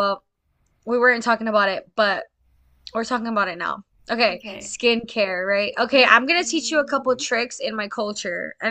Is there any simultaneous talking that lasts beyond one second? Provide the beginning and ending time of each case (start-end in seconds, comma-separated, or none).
6.0-7.3